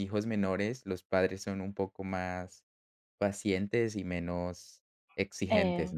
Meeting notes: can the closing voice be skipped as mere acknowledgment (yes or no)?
no